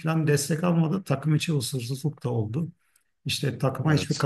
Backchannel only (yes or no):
yes